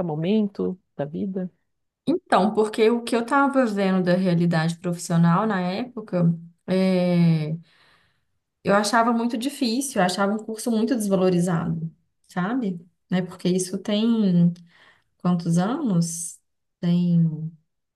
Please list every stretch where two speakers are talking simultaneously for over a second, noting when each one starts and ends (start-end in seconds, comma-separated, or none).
none